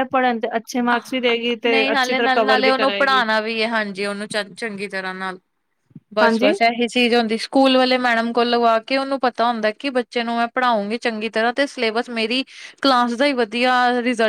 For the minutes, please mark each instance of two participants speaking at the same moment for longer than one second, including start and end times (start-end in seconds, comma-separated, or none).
1.7-3.3